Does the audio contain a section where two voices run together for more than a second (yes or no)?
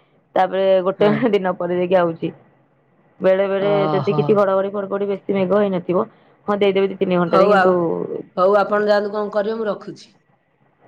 no